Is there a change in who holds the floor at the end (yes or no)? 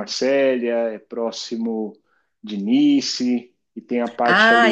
yes